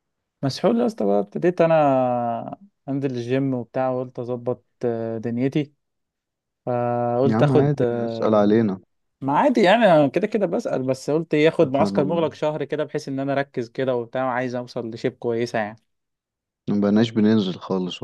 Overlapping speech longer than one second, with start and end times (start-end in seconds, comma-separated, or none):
7.2-8.6